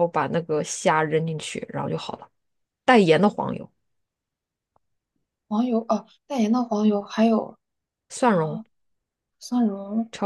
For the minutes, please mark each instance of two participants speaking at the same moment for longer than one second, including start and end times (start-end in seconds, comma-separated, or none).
none